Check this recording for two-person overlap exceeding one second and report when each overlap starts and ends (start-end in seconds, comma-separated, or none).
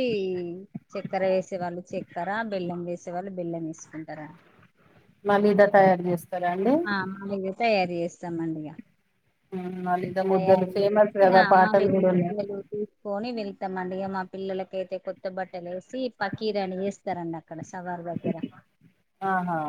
10.3-12.4